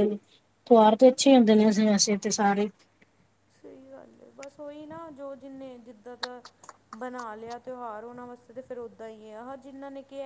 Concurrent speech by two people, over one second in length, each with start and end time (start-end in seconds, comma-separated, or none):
none